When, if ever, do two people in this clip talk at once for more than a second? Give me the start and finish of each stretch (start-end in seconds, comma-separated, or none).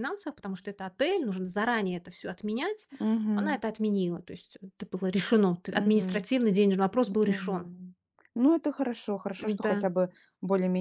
none